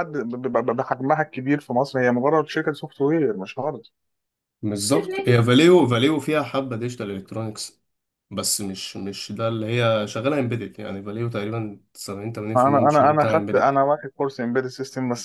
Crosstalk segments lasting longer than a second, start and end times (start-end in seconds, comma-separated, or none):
12.6-13.8